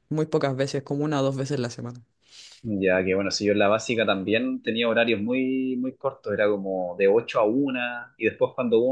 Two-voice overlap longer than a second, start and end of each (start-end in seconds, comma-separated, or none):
none